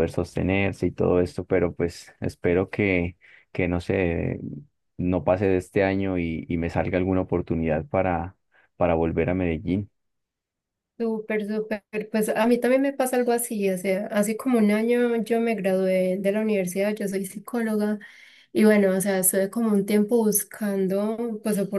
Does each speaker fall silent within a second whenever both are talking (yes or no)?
yes